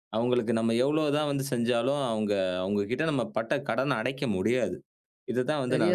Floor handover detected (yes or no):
no